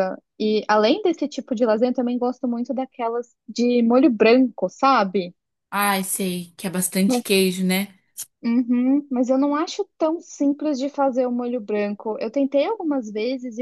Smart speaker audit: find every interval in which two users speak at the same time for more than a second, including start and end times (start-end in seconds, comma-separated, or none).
none